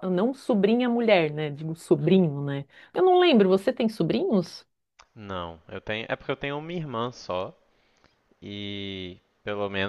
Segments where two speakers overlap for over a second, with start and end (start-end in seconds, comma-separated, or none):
none